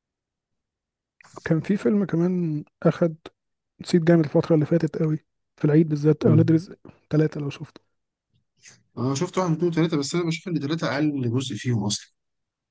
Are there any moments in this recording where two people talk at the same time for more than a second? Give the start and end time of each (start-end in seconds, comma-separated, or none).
none